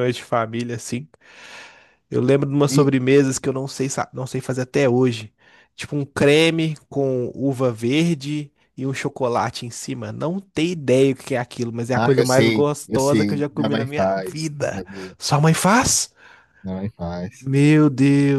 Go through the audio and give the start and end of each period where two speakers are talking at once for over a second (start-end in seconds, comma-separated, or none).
11.9-15.2